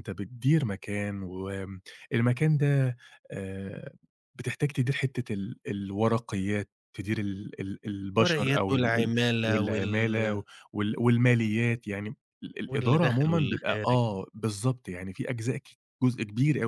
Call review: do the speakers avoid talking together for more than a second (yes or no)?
no